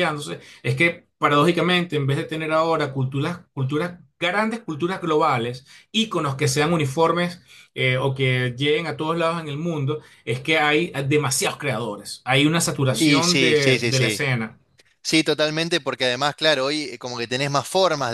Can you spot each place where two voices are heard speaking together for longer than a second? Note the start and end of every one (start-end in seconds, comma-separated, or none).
12.9-14.2